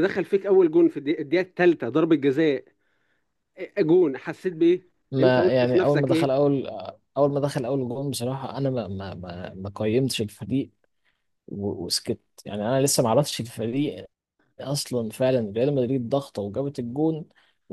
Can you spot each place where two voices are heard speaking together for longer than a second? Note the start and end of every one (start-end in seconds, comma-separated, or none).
5.1-6.3